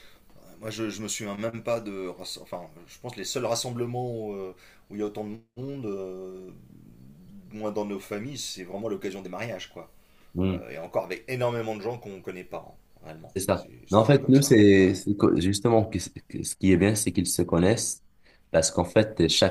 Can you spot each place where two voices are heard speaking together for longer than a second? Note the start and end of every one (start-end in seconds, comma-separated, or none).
13.3-15.1